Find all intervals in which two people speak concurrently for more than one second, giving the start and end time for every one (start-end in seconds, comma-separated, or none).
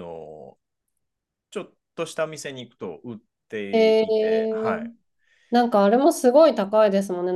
3.7-4.9